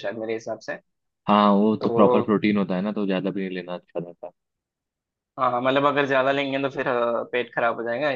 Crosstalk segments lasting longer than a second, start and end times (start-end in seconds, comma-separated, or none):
none